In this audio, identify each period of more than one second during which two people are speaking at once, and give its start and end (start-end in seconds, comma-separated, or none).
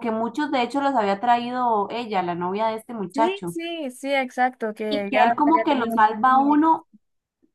4.9-6.6